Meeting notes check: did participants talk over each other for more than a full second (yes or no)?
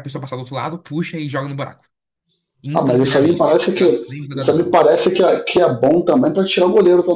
yes